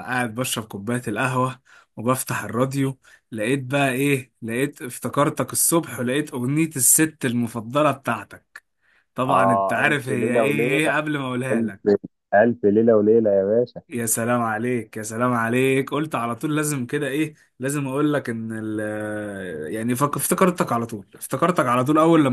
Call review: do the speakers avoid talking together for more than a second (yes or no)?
no